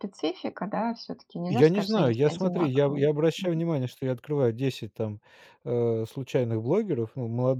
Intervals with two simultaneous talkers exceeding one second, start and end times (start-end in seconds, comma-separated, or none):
1.5-3.5